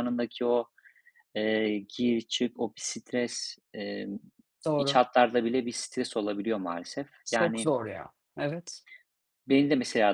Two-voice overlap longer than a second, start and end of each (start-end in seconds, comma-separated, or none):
none